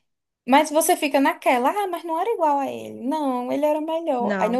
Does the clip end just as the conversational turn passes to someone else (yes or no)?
no